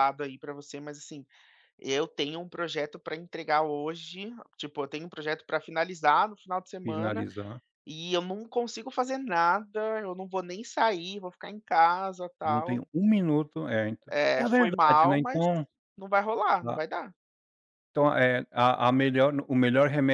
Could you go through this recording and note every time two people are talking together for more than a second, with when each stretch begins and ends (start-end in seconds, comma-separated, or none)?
14.2-15.5